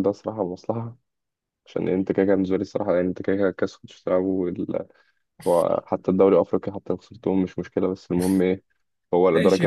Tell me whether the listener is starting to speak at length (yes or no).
yes